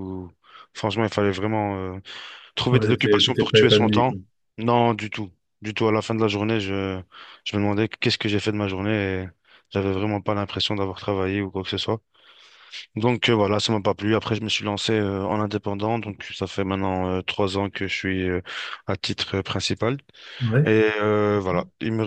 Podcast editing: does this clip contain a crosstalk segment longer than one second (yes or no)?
yes